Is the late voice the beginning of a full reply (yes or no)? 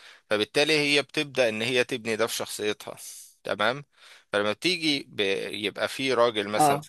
no